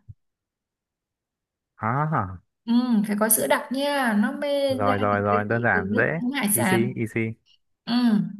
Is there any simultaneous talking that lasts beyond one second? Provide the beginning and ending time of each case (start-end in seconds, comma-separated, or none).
4.7-6.9